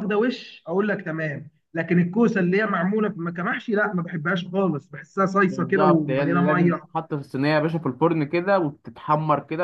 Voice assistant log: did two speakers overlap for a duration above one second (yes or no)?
yes